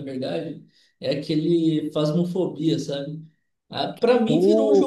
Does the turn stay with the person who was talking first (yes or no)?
yes